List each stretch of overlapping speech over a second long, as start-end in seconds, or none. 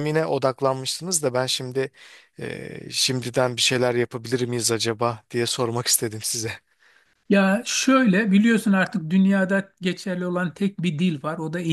none